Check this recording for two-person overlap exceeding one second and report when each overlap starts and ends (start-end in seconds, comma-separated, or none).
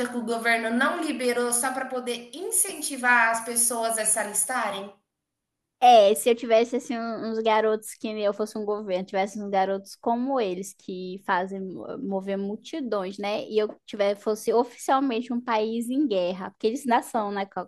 none